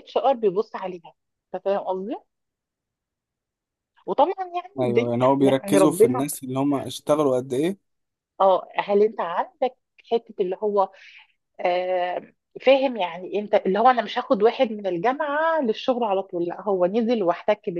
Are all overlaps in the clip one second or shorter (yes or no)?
no